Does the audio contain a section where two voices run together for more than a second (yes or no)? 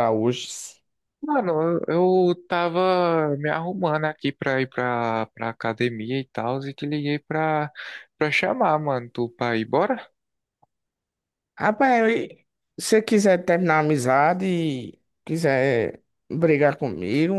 no